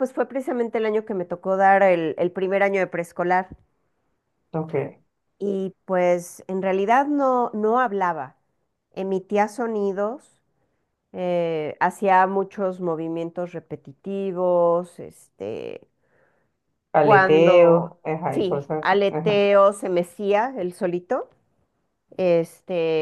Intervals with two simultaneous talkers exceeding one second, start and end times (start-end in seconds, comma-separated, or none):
17.0-19.5